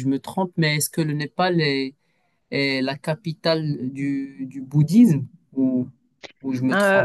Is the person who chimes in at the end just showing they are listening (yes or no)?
no